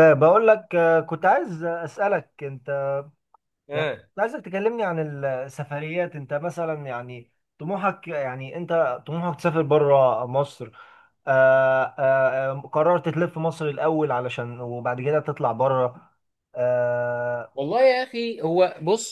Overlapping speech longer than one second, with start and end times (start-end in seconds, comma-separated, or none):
none